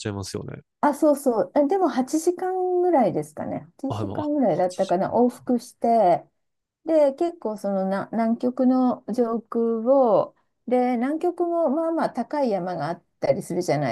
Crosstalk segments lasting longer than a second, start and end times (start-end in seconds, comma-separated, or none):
3.9-5.6